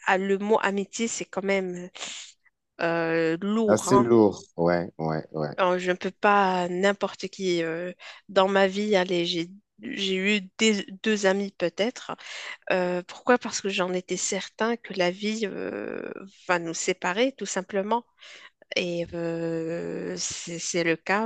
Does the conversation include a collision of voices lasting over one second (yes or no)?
no